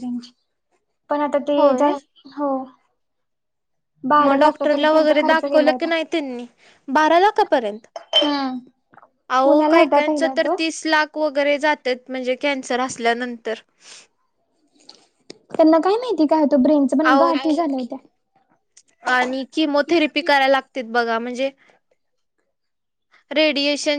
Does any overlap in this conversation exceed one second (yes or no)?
yes